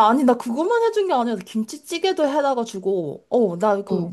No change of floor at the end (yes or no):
yes